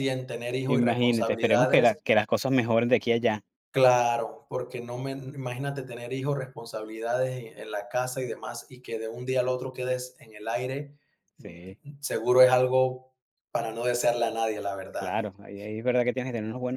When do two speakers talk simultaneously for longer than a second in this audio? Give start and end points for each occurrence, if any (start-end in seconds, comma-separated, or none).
0.7-2.0